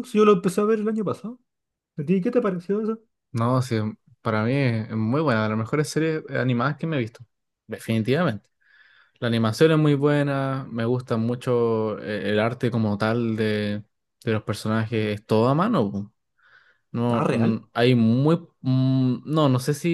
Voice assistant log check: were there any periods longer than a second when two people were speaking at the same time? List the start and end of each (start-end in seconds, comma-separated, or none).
none